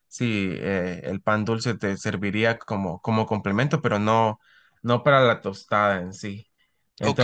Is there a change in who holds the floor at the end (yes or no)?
yes